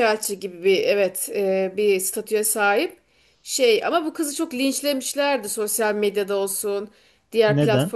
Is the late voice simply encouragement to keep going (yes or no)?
yes